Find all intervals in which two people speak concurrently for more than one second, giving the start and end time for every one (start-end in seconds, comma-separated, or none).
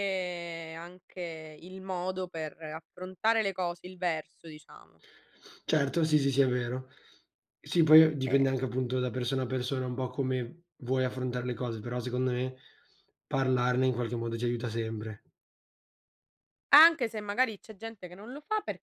none